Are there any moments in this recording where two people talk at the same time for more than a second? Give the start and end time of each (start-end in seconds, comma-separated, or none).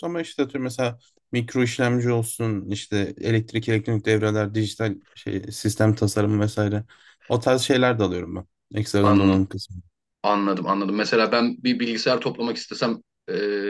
none